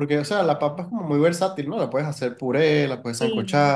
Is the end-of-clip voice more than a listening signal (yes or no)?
no